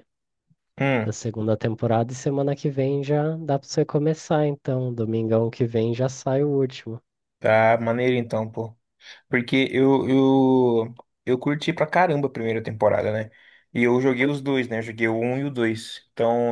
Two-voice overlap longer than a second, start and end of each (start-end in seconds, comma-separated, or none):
none